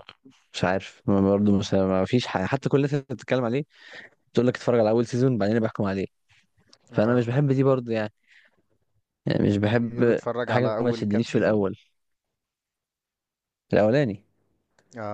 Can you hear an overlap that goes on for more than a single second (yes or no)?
yes